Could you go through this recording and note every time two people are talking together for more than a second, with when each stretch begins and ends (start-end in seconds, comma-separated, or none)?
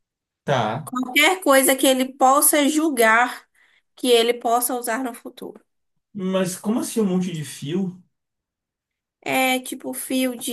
none